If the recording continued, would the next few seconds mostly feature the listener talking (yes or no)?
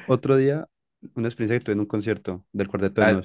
yes